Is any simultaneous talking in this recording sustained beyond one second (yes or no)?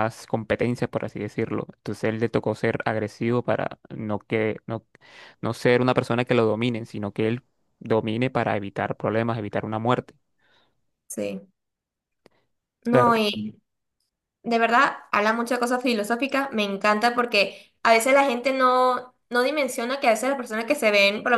no